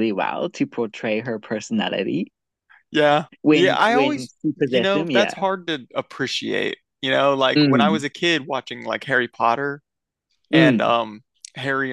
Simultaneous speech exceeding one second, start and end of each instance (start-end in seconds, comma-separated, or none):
3.4-5.3